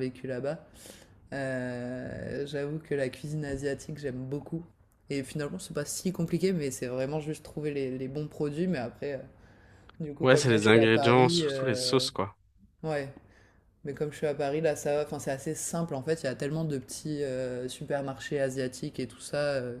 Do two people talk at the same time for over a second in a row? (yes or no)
yes